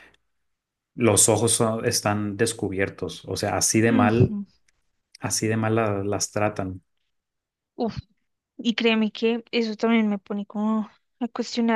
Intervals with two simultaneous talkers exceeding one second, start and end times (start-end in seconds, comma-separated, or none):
none